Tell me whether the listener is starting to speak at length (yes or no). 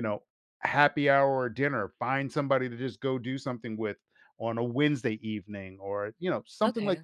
no